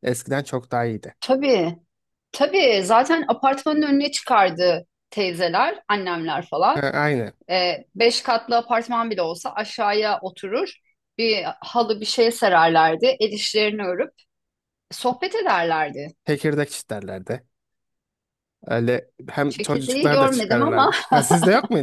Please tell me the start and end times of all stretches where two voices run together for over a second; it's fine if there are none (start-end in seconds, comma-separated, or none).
19.5-20.9